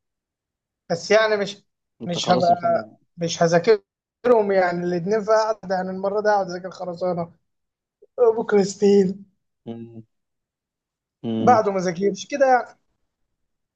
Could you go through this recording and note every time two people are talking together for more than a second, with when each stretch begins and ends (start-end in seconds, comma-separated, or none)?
none